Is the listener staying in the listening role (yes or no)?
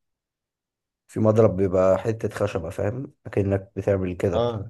yes